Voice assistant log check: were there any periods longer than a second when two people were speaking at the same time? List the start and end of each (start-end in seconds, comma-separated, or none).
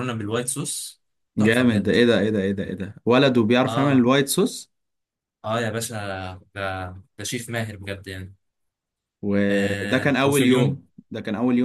9.5-10.8